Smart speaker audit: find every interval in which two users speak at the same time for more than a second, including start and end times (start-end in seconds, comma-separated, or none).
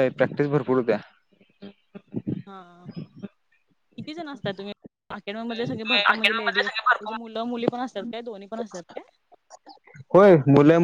5.7-7.2